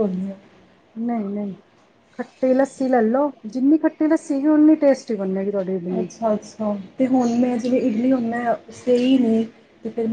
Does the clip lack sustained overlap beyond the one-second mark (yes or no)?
yes